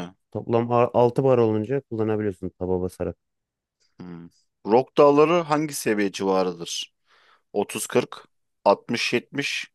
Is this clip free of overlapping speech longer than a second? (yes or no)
yes